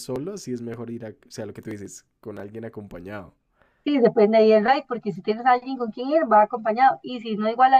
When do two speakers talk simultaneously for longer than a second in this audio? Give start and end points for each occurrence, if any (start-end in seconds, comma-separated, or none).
none